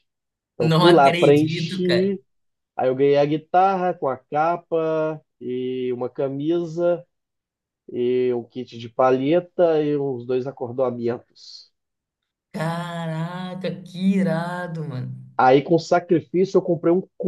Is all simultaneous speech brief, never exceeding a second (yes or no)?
no